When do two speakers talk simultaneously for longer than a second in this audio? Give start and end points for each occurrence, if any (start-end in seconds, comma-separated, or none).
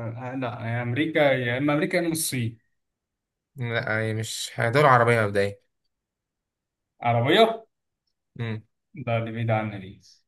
none